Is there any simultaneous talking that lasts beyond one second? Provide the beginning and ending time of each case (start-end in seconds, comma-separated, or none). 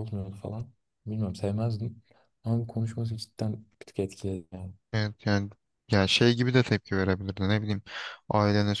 none